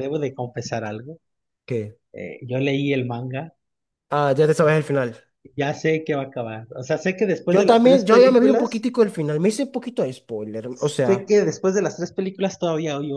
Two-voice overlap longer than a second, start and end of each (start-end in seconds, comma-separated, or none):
7.5-8.9